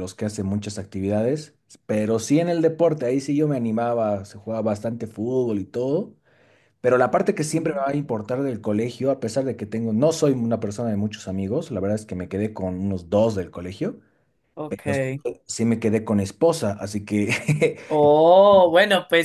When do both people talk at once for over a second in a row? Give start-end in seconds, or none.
none